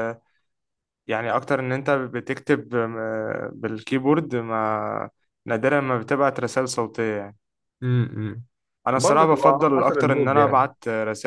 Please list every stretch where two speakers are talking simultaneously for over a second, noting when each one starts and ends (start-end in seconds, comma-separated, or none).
9.0-10.7